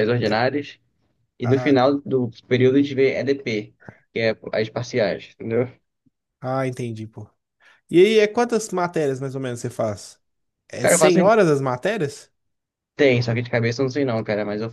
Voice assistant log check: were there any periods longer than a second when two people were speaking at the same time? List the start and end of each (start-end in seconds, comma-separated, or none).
none